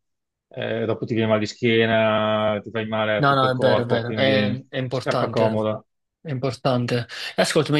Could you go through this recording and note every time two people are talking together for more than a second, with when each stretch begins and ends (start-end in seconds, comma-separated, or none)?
3.2-5.6